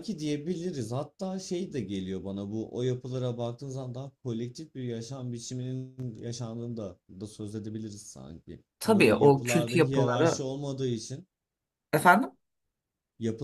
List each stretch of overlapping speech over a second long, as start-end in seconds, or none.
8.8-10.4